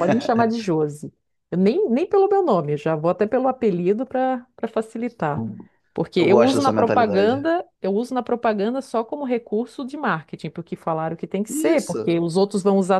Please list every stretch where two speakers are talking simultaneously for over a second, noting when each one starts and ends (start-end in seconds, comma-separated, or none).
6.2-7.5